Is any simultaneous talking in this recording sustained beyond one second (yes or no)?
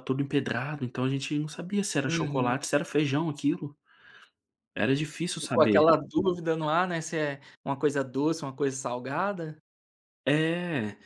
no